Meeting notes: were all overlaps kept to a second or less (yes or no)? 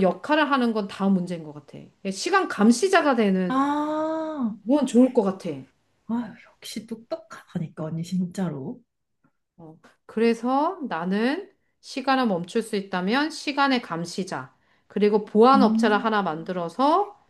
yes